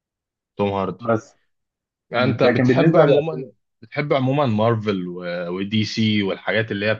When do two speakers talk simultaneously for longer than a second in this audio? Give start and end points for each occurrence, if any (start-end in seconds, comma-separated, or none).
2.1-3.5